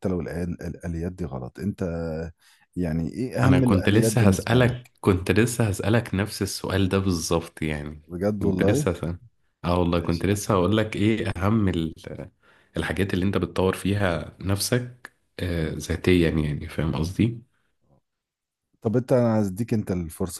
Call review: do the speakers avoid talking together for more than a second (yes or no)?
no